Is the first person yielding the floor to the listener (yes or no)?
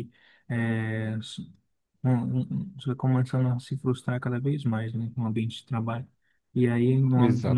no